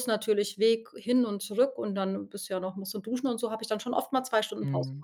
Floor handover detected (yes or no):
yes